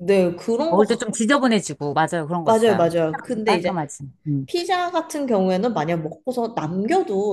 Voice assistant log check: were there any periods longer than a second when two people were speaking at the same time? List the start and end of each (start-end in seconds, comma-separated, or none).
2.4-3.9